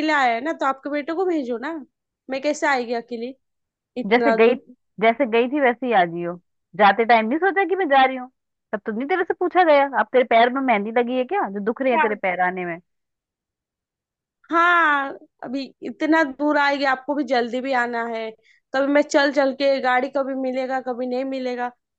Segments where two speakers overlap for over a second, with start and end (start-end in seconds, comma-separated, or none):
none